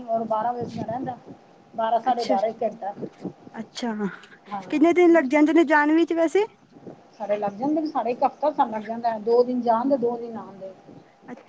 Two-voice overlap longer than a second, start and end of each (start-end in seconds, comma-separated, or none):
none